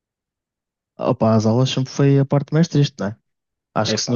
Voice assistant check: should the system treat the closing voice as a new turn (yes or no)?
no